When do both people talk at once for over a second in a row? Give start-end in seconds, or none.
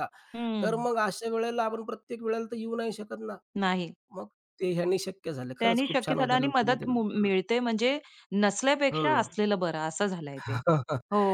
5.6-7.3